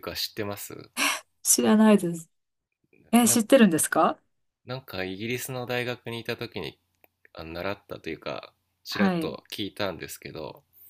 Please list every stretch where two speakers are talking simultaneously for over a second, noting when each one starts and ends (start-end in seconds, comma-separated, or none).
none